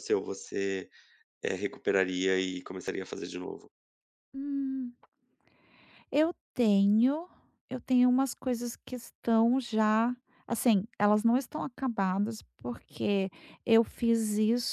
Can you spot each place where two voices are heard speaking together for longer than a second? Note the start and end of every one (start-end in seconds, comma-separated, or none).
none